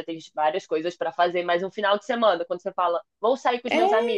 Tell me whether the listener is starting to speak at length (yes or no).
no